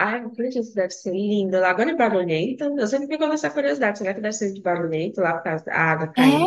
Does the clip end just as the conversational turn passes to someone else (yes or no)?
yes